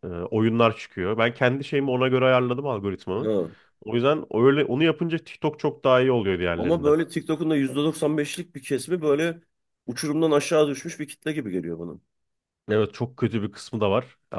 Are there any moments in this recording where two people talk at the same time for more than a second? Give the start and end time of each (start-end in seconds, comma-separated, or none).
none